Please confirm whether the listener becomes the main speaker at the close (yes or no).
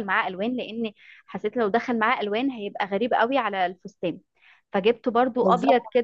no